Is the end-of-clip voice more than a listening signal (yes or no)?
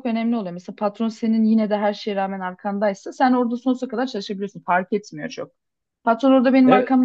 no